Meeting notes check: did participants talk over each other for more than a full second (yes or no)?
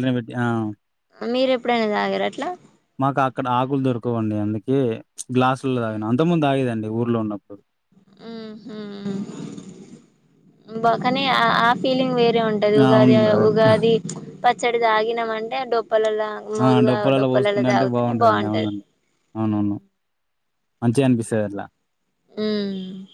yes